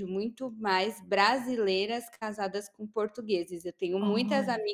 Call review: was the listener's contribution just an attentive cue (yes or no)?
yes